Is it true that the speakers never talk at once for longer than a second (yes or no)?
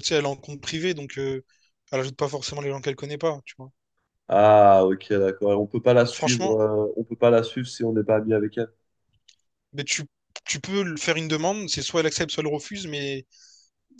yes